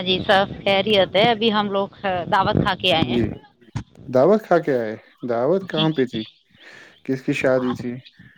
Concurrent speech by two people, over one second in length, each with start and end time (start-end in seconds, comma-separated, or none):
none